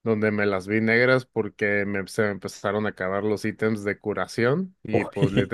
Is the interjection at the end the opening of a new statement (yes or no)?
no